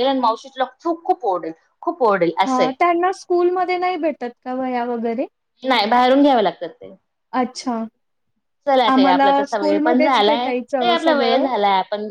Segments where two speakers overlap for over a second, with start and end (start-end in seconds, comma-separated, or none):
8.9-11.4